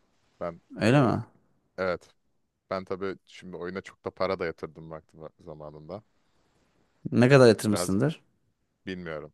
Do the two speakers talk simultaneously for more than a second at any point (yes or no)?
no